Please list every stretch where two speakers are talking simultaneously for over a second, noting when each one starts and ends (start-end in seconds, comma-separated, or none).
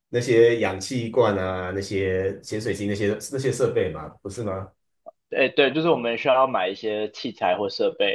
none